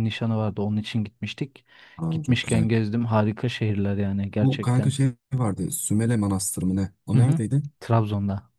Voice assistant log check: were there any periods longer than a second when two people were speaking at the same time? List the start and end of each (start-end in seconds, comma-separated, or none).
none